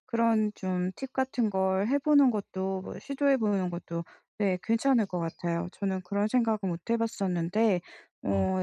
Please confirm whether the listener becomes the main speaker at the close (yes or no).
no